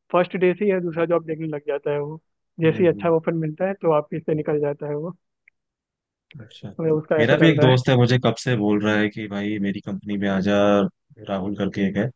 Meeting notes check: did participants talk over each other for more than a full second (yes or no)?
no